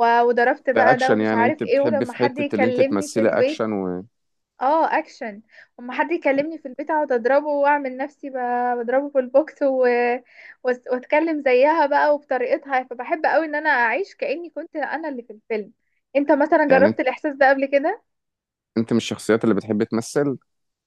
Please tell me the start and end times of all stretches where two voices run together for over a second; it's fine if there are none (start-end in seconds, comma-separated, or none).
0.7-3.6